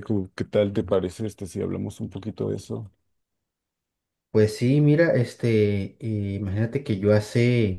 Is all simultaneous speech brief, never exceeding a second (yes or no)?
yes